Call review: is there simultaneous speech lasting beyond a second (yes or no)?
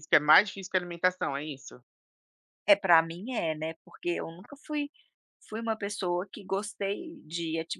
no